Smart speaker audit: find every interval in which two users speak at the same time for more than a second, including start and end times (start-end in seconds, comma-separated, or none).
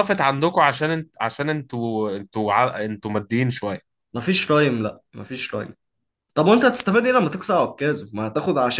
none